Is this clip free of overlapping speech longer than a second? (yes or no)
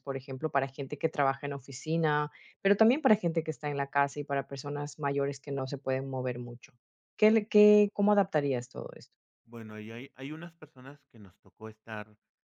yes